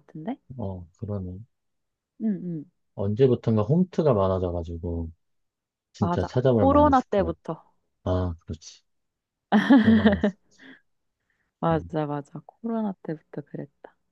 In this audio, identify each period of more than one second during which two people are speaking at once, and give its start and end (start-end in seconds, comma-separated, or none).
6.0-7.4